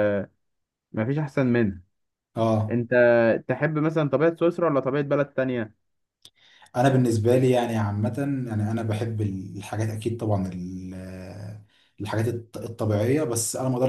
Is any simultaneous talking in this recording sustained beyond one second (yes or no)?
no